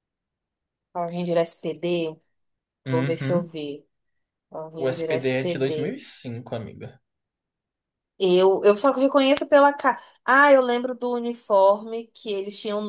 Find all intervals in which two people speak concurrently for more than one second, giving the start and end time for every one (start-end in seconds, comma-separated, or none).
4.8-6.0